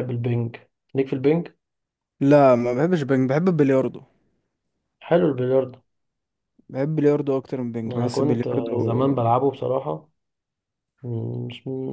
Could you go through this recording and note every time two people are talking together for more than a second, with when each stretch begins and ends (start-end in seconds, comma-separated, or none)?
7.9-9.1